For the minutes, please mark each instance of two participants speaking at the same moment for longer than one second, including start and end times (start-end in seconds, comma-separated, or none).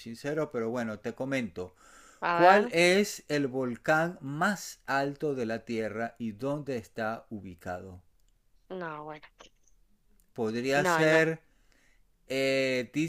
none